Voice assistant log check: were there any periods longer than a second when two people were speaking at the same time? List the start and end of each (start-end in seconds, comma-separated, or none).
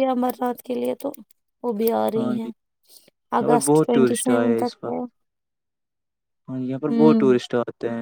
3.4-5.0